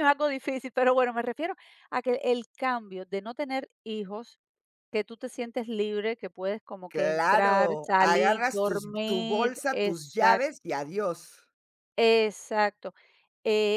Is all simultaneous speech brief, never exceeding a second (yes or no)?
no